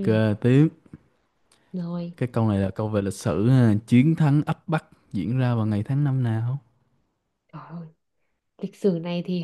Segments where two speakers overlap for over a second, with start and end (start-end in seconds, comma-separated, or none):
none